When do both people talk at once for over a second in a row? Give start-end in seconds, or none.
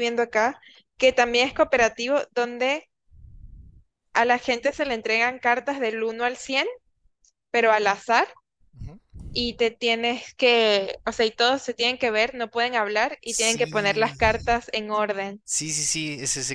13.2-14.6